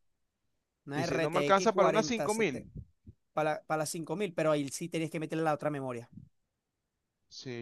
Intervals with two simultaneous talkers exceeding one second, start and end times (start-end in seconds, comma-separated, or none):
0.9-2.7